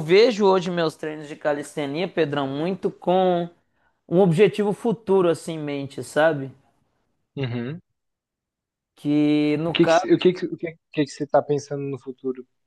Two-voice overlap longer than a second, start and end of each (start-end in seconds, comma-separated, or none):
none